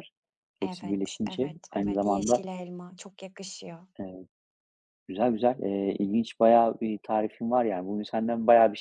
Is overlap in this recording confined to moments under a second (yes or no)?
no